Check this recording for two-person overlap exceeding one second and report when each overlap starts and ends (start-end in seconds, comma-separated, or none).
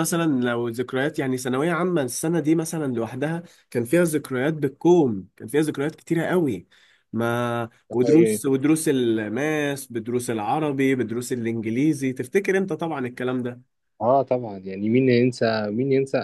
none